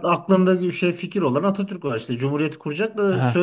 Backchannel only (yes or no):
no